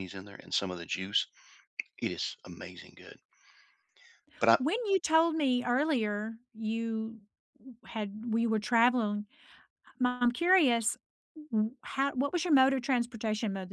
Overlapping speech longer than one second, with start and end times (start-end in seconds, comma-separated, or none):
none